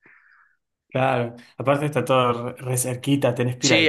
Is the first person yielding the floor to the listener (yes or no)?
yes